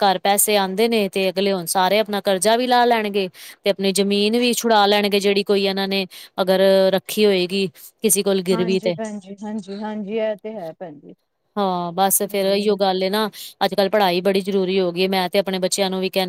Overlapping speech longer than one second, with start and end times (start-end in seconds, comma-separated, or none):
none